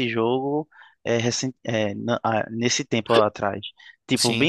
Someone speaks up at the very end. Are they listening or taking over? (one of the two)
listening